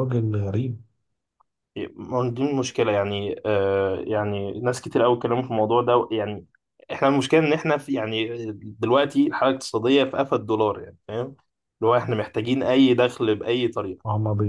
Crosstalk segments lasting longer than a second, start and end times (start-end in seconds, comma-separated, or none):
none